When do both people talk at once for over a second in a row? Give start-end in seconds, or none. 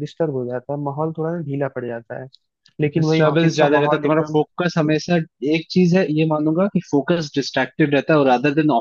3.0-4.4